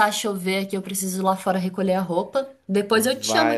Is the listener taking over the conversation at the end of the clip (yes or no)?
yes